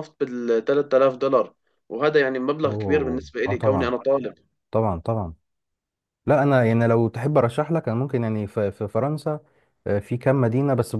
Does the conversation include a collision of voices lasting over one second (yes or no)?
yes